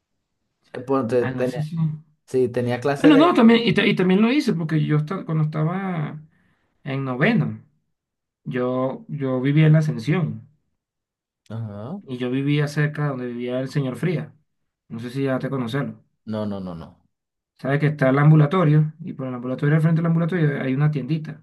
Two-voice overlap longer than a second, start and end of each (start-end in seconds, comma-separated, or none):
none